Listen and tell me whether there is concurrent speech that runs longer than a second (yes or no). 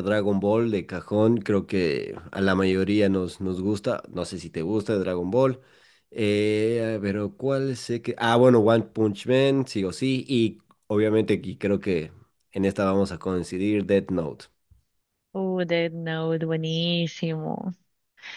no